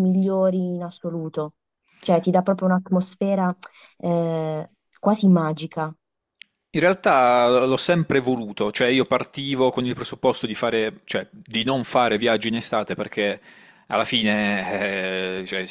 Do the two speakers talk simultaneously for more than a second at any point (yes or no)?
no